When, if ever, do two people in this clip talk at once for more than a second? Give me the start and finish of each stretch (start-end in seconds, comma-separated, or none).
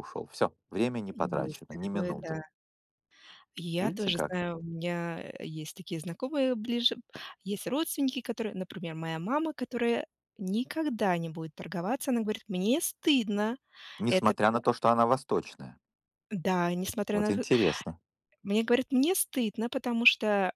1.1-2.4